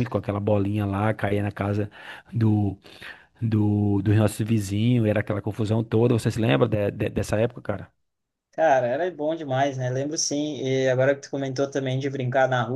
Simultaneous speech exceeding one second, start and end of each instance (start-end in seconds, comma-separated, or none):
none